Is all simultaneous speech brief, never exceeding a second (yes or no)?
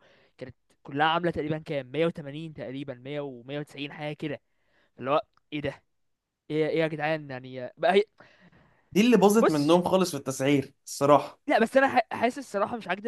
yes